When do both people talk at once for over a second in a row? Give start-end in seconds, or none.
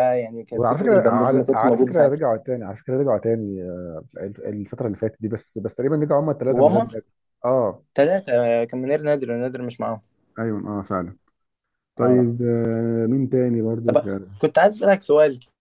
0.5-2.2